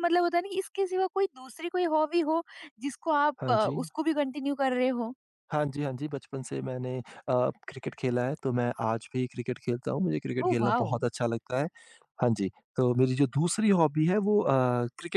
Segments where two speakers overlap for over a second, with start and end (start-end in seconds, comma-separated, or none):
none